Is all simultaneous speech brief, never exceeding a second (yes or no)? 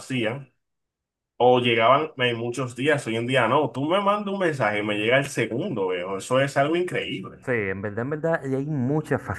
yes